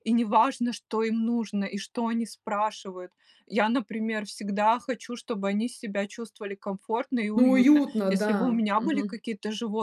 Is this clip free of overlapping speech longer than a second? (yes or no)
no